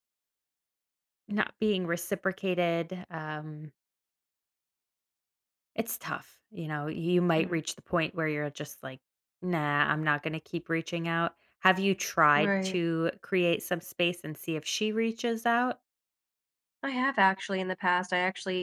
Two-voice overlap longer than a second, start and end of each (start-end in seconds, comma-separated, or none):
none